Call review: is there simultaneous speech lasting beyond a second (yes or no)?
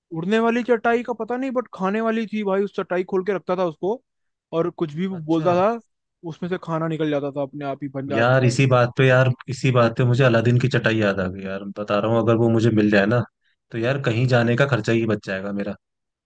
no